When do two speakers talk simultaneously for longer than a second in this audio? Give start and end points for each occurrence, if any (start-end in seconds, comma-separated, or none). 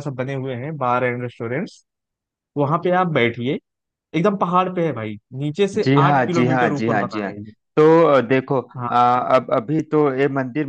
5.8-7.3